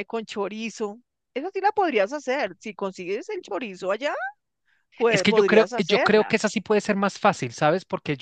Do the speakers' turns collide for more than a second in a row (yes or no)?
yes